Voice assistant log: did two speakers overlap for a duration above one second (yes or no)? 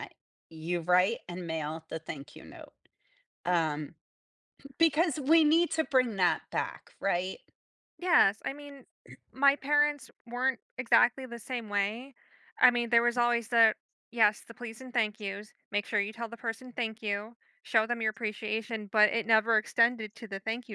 no